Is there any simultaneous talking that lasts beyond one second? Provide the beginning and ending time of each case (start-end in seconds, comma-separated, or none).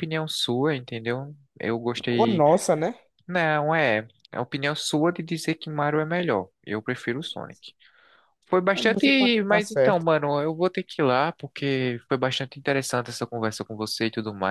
8.7-10.1